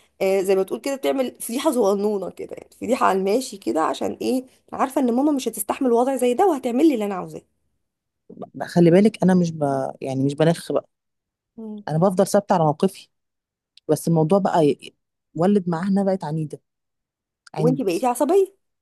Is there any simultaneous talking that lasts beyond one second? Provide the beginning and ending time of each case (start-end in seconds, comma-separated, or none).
none